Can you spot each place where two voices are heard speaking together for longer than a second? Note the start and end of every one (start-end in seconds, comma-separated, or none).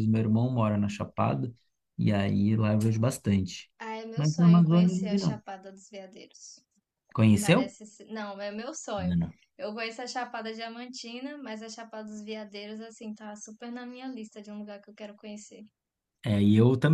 4.2-5.4